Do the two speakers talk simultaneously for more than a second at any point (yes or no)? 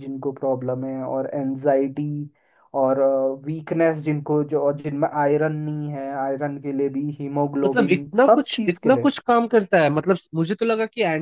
yes